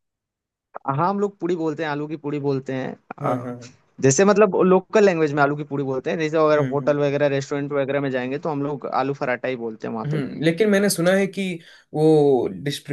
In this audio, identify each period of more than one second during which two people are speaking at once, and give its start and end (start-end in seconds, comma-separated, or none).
none